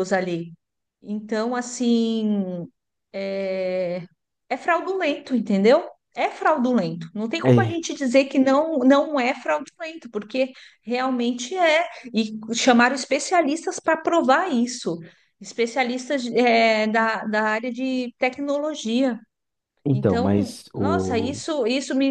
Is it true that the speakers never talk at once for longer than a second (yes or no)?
no